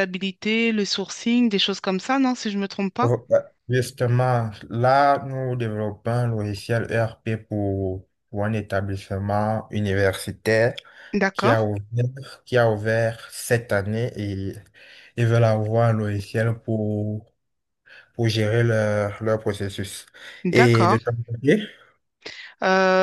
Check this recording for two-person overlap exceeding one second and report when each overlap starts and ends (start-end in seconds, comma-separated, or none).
none